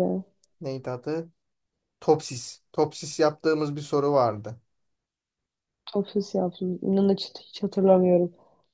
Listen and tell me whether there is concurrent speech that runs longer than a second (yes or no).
no